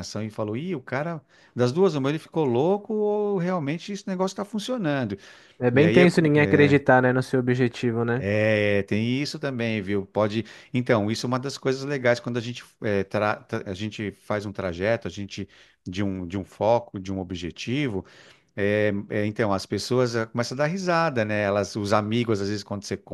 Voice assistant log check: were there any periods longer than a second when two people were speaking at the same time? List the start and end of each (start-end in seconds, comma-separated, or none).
none